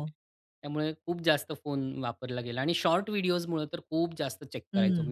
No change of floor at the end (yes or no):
no